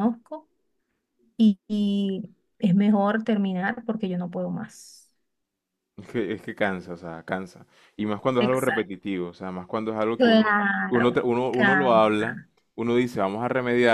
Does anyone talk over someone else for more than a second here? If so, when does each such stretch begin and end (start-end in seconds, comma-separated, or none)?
10.2-12.5